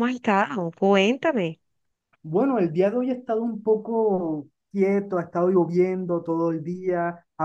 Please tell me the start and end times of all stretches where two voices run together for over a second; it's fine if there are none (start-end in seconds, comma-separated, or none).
none